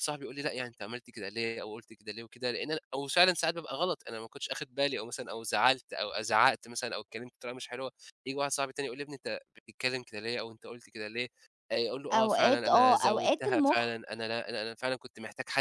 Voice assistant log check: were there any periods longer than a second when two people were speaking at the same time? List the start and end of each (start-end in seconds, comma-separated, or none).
12.1-13.9